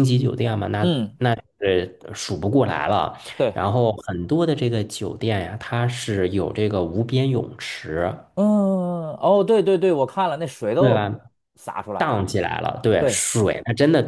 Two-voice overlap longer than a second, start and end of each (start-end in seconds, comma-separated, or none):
none